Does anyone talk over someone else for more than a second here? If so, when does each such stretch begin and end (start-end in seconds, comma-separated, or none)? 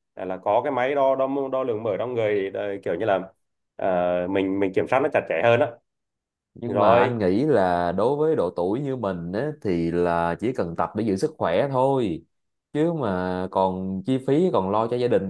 none